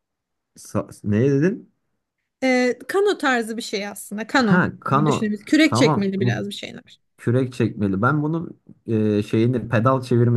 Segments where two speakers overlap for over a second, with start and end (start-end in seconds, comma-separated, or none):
4.4-6.4